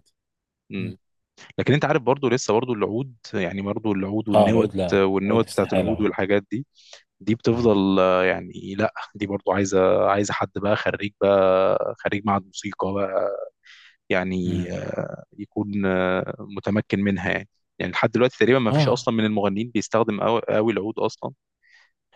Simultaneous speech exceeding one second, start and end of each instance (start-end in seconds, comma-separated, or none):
4.3-6.1